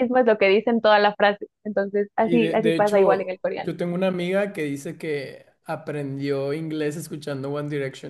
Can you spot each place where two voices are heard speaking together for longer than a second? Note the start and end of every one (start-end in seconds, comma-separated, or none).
2.2-3.7